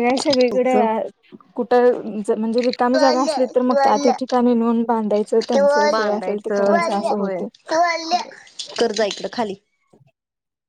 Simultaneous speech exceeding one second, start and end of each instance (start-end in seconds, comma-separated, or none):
5.9-7.4